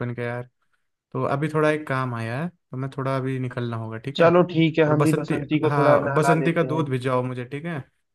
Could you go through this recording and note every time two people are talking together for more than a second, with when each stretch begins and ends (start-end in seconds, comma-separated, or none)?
4.9-6.8